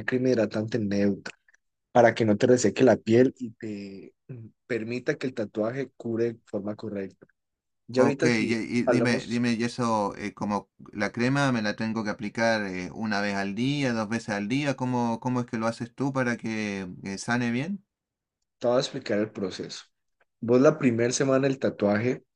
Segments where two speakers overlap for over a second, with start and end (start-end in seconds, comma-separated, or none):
7.9-9.4